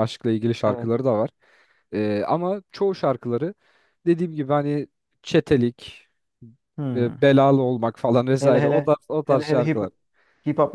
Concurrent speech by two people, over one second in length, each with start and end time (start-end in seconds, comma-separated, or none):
8.4-9.8